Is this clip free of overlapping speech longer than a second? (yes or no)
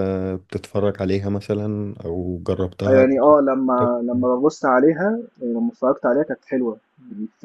yes